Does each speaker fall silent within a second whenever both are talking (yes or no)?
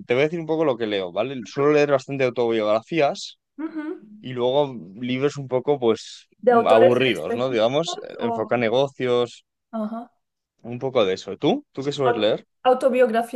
no